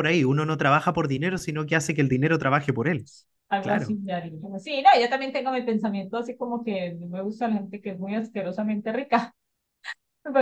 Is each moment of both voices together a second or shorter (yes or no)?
yes